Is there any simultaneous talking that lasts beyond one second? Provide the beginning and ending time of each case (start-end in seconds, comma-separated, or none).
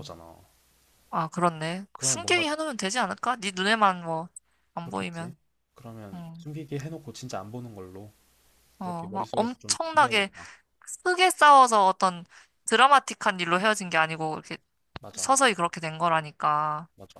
8.8-10.3